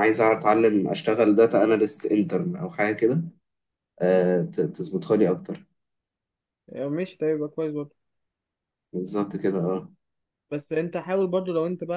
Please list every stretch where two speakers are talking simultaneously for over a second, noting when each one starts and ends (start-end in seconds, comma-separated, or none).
none